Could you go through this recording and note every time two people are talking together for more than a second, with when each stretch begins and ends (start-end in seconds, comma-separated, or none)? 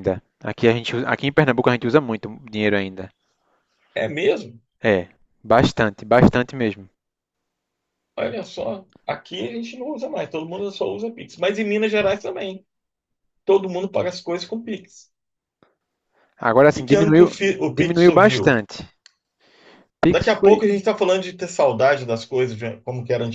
16.8-18.6